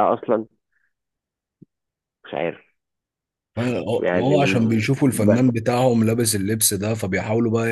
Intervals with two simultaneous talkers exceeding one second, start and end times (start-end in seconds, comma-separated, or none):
4.0-5.6